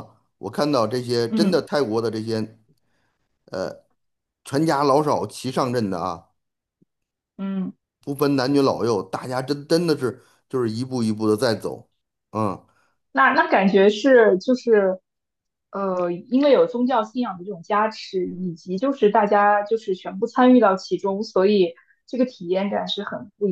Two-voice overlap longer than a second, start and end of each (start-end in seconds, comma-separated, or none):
none